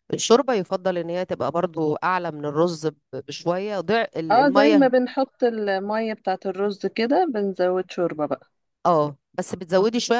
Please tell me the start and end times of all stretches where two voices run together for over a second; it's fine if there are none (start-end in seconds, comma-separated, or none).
none